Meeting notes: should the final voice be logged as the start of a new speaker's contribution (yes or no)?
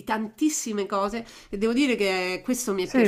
yes